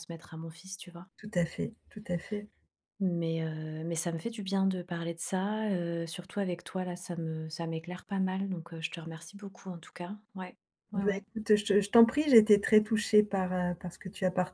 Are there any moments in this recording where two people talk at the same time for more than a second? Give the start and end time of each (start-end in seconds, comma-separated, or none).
none